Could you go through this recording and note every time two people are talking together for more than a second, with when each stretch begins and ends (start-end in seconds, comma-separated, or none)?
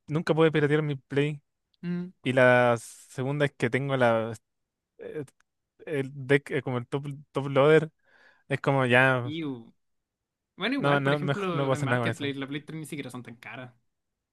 10.8-12.3